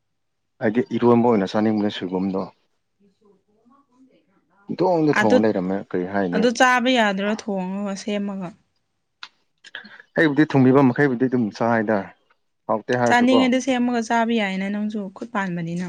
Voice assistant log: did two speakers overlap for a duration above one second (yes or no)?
no